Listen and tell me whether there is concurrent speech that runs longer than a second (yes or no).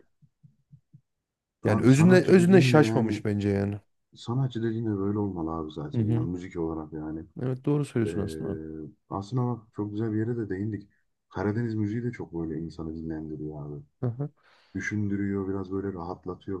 yes